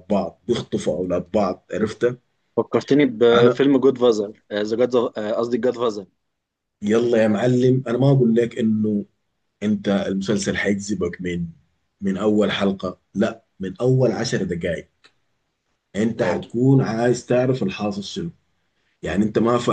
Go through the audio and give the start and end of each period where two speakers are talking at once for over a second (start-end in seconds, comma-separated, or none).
none